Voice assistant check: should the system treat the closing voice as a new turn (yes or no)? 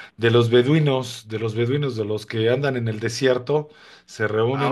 no